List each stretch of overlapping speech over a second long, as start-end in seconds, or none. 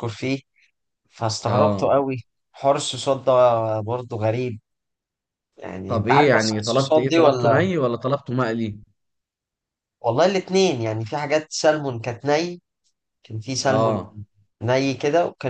5.9-7.7